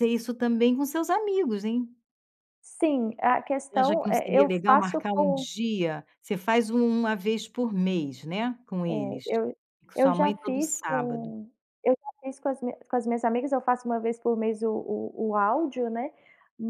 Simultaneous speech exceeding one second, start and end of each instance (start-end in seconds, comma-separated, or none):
3.7-5.5, 10.0-11.3